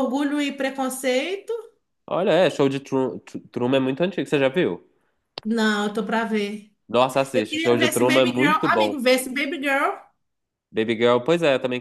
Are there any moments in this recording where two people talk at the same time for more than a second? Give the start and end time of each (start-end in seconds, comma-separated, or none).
7.3-9.0